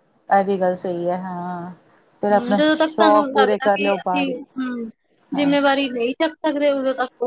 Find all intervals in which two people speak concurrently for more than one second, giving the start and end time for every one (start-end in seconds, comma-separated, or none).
2.4-4.3